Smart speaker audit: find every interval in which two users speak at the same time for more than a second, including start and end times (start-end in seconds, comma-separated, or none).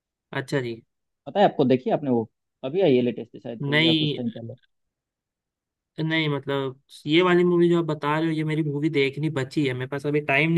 none